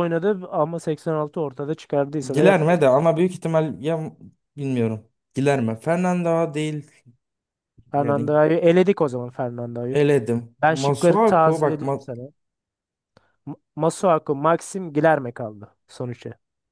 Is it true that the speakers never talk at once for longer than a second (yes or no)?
no